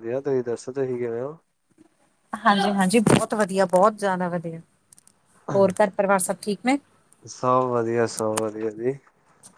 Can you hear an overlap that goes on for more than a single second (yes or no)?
no